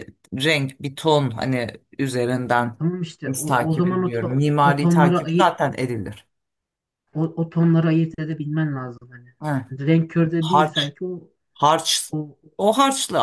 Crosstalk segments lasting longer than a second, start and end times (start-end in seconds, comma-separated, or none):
3.3-5.5